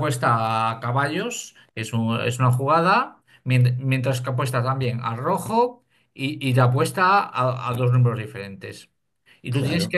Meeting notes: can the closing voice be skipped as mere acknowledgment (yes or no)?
yes